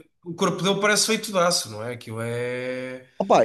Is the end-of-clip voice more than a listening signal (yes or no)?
yes